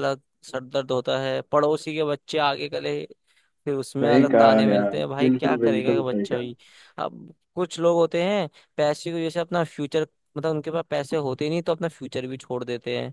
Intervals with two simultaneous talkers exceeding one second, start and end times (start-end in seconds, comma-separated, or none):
4.0-6.5